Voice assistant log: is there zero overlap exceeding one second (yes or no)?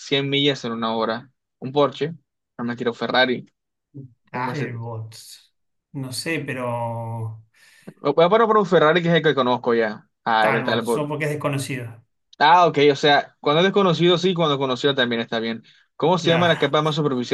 yes